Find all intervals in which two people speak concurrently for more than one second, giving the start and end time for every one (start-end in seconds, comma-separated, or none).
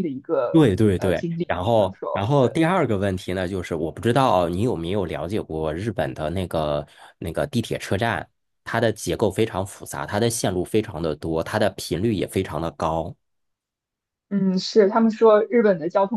0.5-2.6